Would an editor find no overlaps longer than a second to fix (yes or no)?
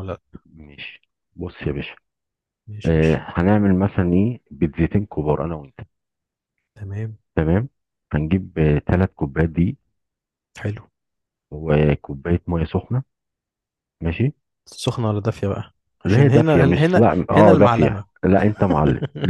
no